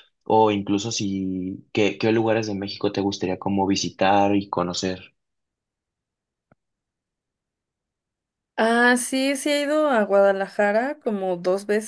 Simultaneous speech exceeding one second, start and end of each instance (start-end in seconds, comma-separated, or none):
none